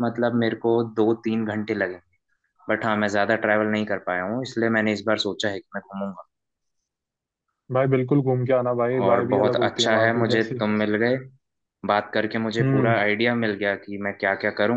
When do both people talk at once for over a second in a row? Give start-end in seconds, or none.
9.0-10.6